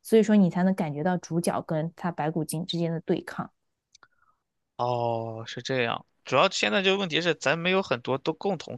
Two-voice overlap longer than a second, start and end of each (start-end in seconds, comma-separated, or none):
none